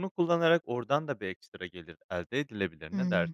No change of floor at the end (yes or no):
no